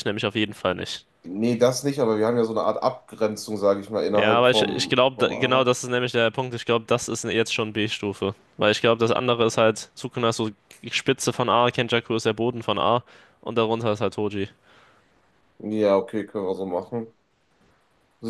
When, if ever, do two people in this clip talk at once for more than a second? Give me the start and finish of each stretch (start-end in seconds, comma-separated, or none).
4.2-5.7